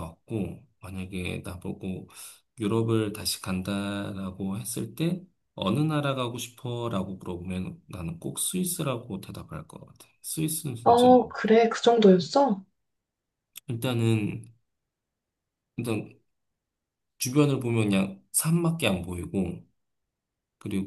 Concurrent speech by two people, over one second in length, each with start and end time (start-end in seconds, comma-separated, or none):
none